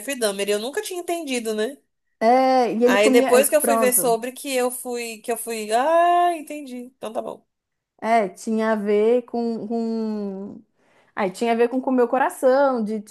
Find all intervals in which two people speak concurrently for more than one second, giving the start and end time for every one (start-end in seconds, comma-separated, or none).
2.8-4.2